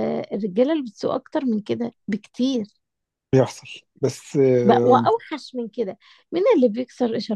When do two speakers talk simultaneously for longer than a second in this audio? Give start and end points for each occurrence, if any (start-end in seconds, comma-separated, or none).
none